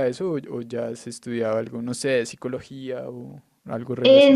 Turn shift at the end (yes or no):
yes